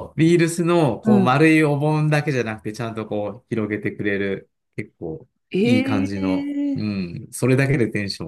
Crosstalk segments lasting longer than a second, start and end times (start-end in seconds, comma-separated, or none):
5.5-7.0